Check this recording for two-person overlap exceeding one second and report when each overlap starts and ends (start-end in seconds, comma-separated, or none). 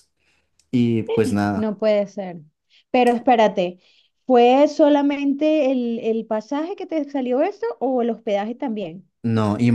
none